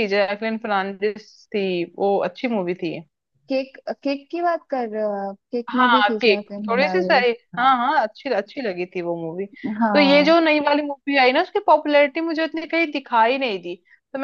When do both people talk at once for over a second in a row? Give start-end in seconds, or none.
5.7-7.8